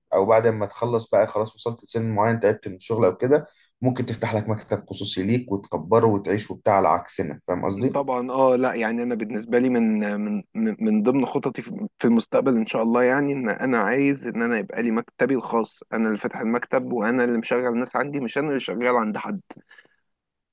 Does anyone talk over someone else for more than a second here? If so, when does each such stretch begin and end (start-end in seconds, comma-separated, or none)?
none